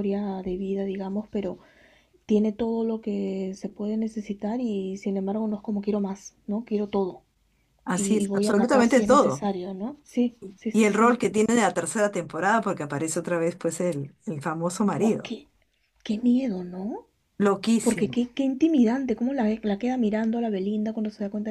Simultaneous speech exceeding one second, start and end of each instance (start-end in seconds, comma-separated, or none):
7.9-9.5